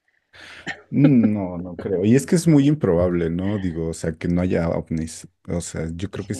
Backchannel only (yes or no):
yes